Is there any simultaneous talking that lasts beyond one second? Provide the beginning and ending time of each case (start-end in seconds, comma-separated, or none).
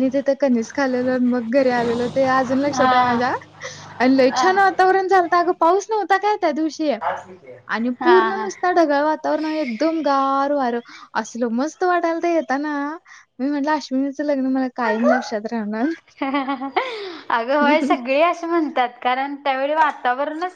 none